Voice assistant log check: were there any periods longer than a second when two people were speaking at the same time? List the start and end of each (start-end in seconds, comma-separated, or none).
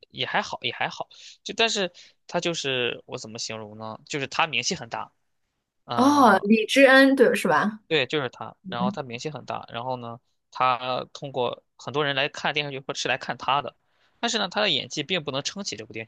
none